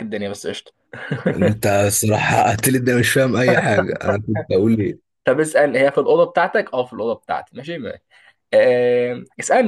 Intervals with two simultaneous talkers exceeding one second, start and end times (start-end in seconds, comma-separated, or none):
none